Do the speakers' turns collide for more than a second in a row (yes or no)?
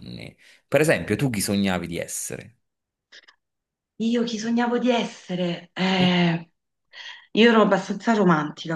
no